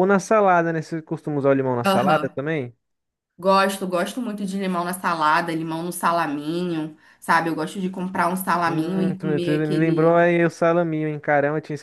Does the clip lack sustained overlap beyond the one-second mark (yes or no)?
no